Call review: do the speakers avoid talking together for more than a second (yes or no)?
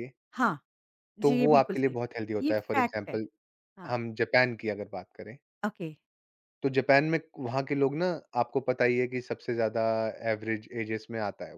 no